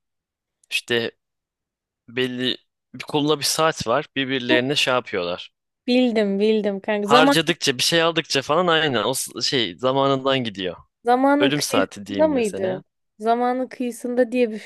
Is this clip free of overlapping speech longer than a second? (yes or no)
no